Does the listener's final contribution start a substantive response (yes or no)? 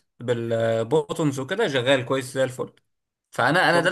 no